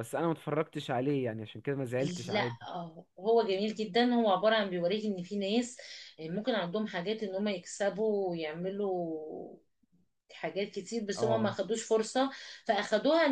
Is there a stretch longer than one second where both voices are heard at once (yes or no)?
no